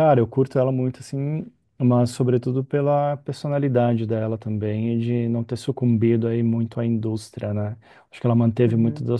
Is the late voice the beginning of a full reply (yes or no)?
no